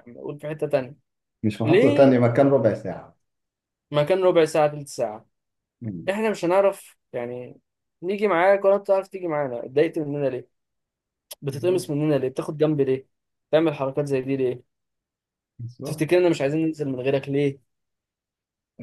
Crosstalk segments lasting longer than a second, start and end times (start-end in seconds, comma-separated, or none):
none